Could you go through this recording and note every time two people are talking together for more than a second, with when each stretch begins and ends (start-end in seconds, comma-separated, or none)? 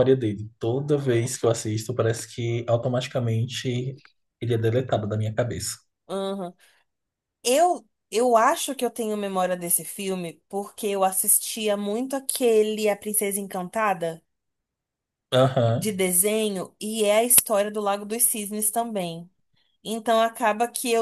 none